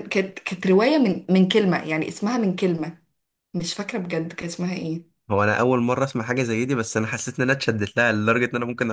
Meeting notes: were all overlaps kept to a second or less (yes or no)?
yes